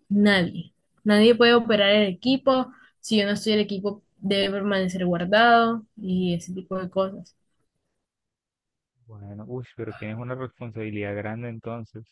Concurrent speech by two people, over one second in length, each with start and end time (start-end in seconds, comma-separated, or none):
none